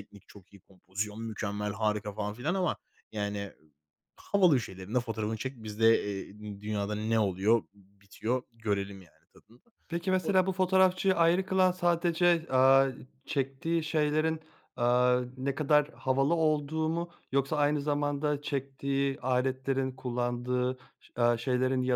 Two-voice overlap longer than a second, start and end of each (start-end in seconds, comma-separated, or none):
none